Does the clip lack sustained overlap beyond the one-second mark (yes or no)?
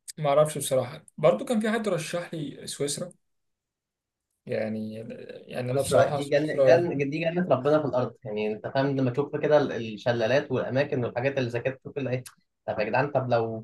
no